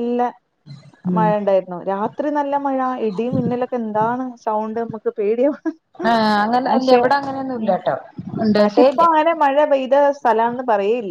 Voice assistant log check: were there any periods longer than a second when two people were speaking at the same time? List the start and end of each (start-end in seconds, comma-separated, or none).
none